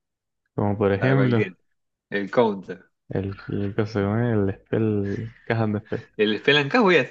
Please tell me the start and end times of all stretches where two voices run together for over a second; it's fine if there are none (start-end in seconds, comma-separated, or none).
none